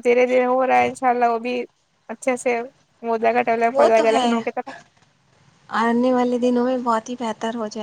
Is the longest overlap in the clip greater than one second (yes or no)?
no